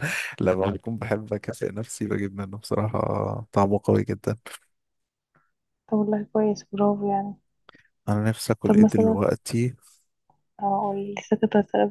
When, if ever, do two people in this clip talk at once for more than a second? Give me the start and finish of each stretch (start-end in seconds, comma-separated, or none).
none